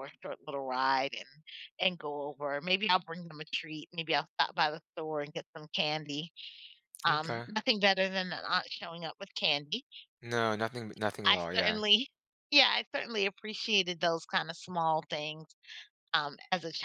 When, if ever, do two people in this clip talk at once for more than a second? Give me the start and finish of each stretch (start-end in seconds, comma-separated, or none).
none